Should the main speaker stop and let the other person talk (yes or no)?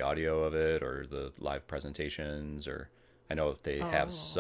no